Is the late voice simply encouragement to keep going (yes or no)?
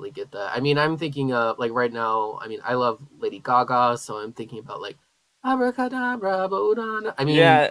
no